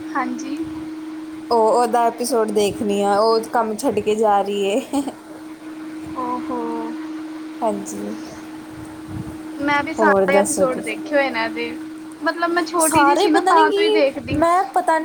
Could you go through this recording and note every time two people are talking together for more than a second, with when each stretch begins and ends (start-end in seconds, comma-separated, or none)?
12.8-14.4